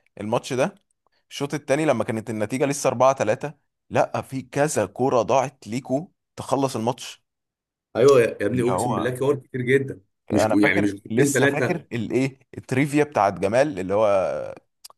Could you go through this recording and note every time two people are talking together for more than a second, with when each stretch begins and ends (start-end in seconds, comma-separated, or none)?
10.3-11.8